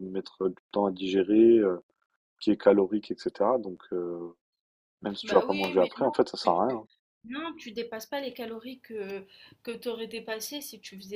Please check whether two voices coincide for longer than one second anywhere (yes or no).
yes